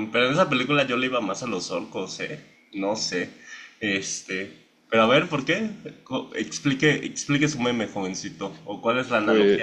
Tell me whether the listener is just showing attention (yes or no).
yes